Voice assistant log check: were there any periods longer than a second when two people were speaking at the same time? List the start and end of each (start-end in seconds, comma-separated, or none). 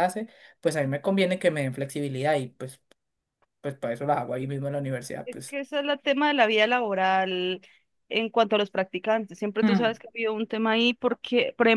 none